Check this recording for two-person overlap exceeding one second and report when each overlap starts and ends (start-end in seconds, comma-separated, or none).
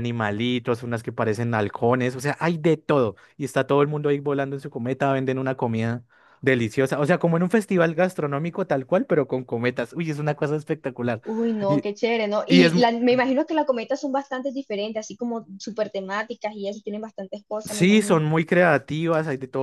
none